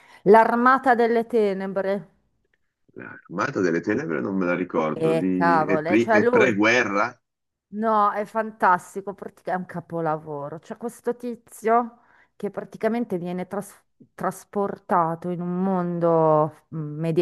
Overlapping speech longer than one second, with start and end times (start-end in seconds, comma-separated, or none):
4.9-6.6